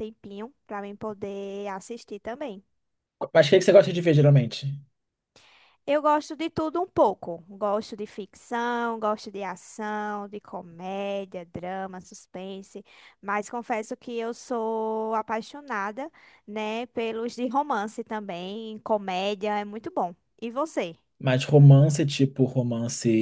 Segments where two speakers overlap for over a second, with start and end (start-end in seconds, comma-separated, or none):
none